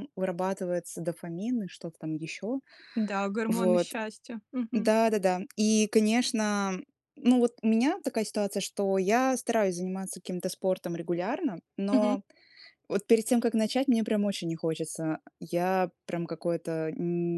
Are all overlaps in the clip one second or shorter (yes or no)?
yes